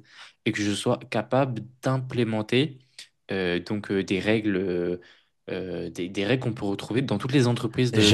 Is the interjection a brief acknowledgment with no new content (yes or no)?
no